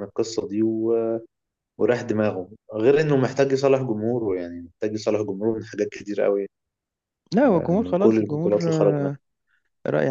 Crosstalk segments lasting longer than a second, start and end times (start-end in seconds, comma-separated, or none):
7.5-9.0